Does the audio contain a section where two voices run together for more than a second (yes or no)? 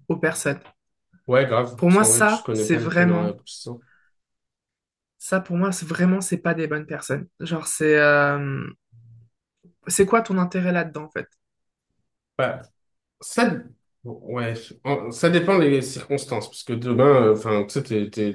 yes